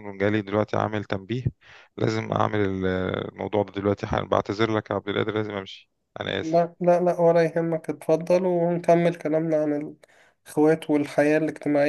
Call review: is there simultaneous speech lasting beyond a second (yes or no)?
no